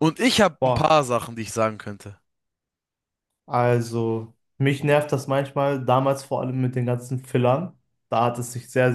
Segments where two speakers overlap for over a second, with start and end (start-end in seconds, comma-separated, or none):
none